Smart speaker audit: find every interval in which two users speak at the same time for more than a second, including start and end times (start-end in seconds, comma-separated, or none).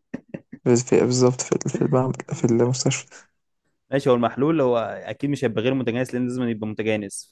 none